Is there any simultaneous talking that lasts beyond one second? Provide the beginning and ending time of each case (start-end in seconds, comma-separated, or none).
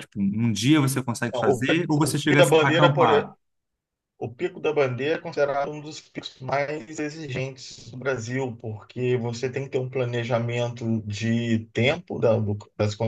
1.3-3.1